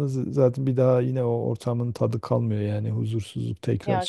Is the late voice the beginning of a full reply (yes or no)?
yes